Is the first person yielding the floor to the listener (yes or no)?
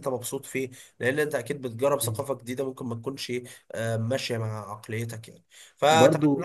no